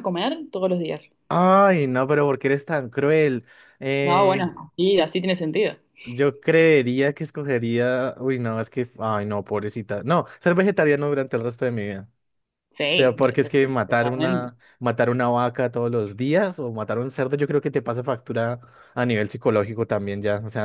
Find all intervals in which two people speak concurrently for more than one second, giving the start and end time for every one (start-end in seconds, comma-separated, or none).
12.9-14.5